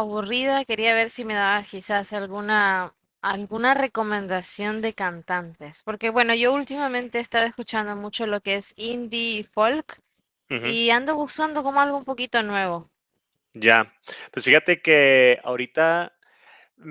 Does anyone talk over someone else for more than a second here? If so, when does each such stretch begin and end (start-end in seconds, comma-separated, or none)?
none